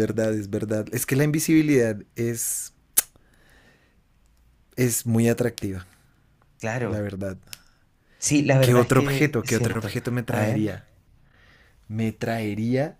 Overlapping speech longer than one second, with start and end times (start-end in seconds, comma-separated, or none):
8.6-10.7